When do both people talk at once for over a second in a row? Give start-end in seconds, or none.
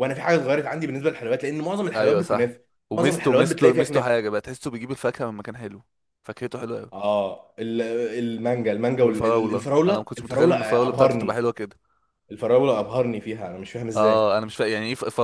1.9-4.2, 9.0-11.5